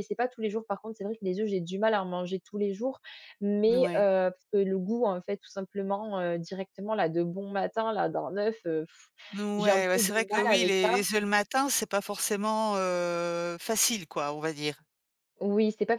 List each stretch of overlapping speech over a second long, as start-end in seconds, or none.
9.6-11.0